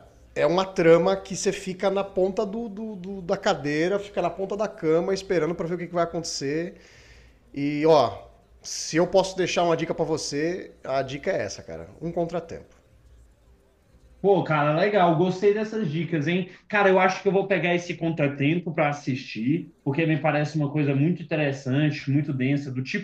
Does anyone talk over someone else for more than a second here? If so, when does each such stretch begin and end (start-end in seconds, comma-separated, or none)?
none